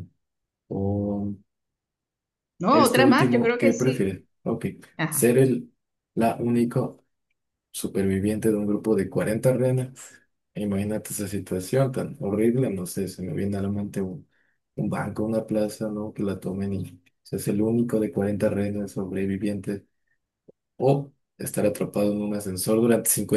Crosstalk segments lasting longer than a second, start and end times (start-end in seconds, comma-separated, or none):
2.7-4.2